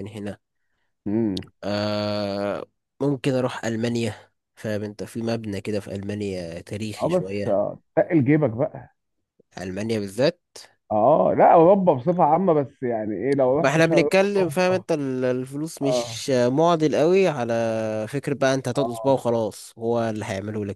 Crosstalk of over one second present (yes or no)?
yes